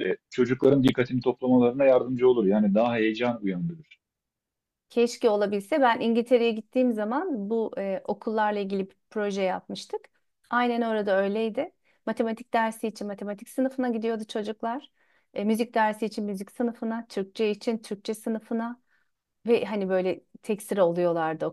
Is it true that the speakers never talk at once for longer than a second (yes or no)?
yes